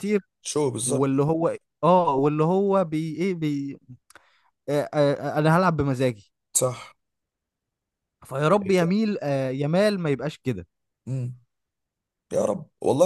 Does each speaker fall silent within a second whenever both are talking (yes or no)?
yes